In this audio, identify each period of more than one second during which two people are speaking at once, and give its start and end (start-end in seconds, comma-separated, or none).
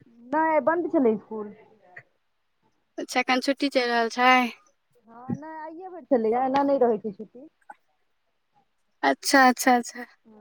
none